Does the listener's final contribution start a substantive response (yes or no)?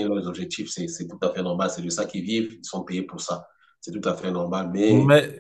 yes